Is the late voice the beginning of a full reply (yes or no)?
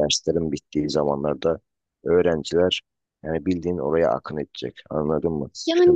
yes